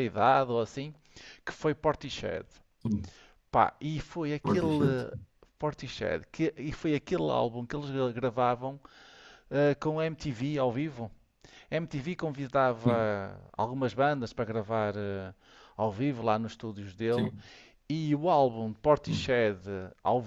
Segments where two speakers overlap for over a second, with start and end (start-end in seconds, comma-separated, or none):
none